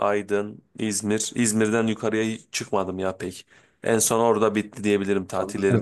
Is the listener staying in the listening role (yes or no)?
no